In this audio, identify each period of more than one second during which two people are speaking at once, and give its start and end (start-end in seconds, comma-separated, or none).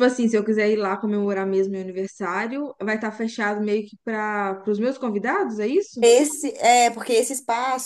none